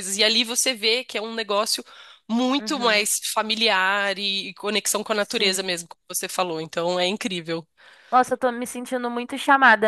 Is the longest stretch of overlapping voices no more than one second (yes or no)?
yes